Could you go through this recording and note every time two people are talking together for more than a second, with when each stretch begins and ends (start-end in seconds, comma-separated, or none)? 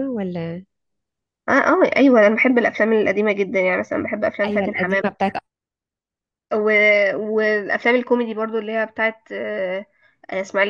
none